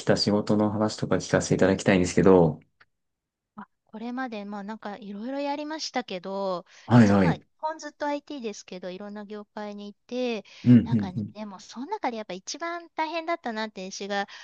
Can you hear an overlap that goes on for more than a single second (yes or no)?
no